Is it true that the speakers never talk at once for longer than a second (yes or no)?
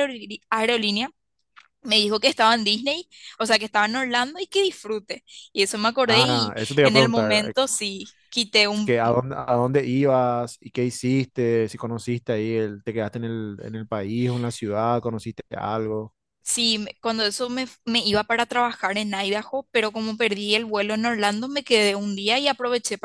no